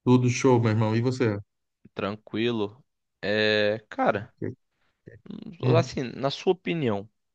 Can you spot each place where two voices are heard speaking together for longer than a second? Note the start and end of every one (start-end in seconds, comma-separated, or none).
none